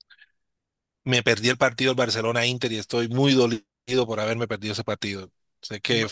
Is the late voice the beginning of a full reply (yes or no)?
no